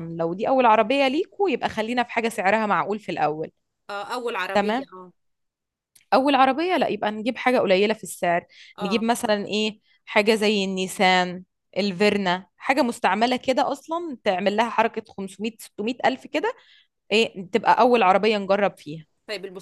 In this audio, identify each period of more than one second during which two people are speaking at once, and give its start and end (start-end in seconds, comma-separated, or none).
none